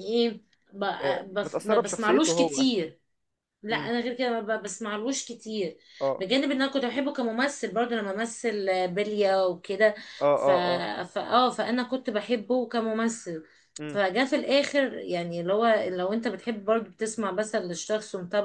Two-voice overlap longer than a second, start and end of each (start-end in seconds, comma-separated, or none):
1.0-2.6